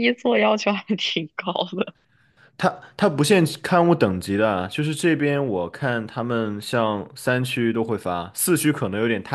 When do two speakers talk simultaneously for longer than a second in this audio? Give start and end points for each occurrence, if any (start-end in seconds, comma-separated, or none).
none